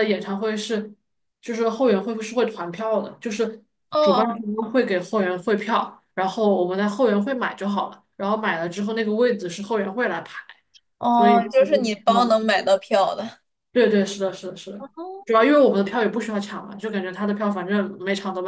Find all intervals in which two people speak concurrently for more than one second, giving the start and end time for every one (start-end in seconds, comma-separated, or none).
11.2-12.6